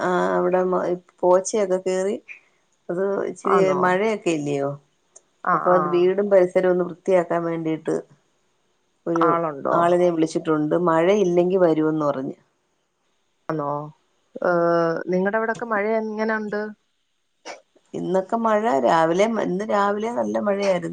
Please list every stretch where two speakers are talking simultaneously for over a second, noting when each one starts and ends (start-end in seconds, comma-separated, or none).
none